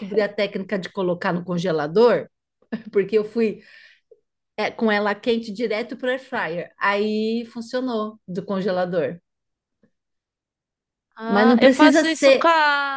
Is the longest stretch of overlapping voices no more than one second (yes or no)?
no